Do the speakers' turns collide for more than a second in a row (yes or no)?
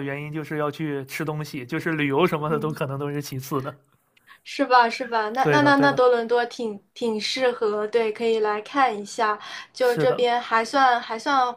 no